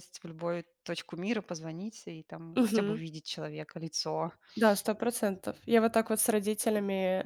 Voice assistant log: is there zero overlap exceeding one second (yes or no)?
yes